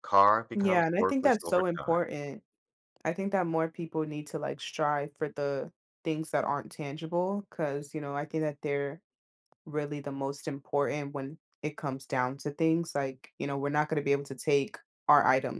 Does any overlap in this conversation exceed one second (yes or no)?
yes